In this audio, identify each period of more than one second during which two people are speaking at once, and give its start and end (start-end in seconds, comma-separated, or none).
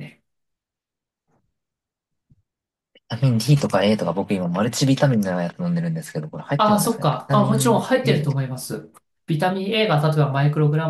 6.6-8.4